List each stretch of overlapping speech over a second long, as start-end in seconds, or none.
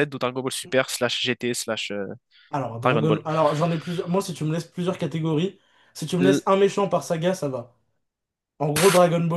none